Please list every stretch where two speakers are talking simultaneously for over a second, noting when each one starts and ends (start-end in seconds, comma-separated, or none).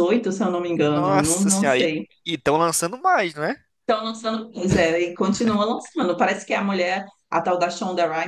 0.7-2.1